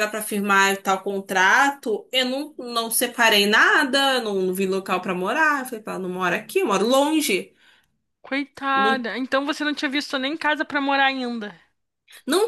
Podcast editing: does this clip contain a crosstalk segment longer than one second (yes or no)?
no